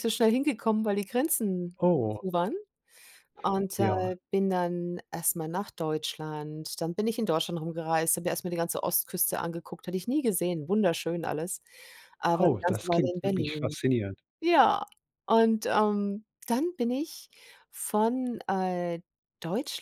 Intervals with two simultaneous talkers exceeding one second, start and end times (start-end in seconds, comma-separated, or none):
12.4-13.8